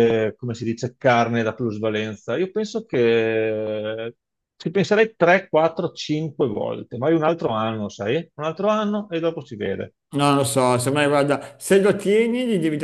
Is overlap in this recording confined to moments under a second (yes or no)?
yes